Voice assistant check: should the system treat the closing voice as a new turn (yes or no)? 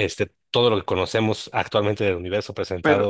no